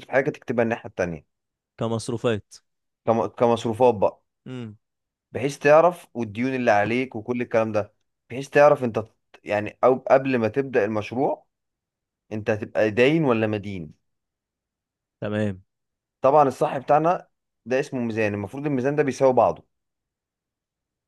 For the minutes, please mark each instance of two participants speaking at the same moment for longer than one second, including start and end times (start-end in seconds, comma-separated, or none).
none